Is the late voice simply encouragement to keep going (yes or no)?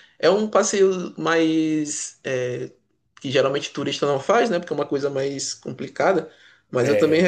yes